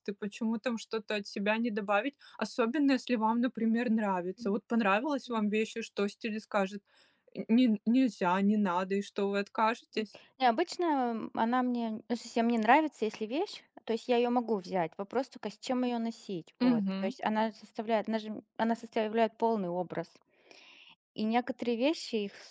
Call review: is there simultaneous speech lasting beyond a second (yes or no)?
no